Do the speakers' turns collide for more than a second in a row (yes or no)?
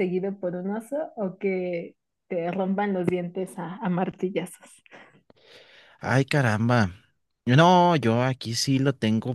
no